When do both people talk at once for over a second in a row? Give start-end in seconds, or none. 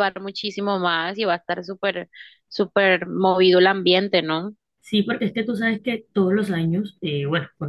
none